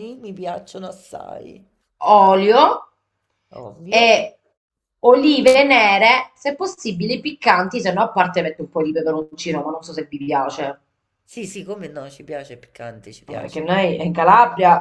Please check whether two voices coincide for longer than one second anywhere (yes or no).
no